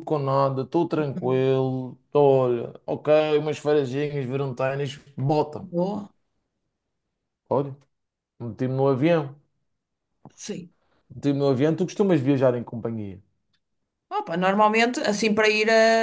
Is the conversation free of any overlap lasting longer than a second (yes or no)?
yes